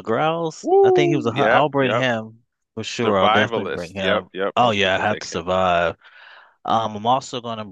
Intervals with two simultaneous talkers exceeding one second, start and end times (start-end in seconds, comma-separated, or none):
0.6-2.1, 3.0-5.4